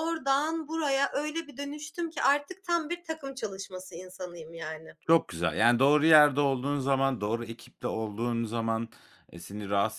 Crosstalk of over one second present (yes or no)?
no